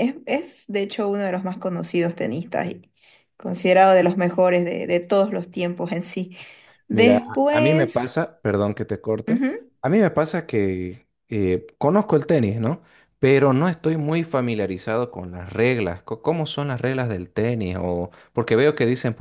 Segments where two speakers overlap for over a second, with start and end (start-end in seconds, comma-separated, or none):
6.9-8.2